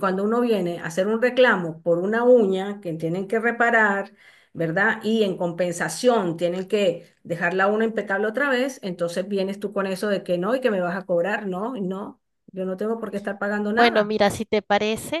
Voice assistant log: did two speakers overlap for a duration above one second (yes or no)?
no